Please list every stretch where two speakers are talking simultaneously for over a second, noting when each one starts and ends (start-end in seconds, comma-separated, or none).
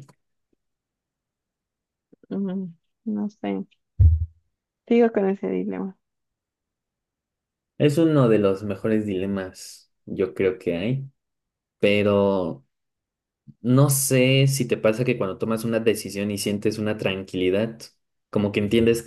none